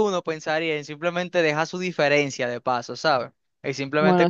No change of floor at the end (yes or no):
yes